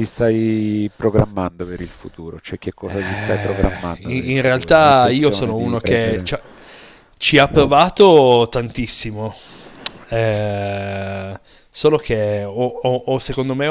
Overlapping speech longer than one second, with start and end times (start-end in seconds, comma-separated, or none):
2.9-6.3